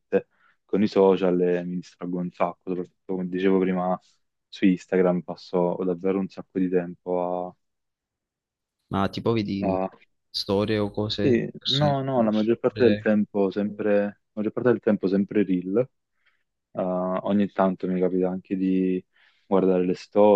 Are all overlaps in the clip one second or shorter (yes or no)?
no